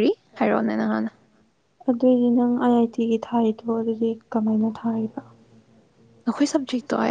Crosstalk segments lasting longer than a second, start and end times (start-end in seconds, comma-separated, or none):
none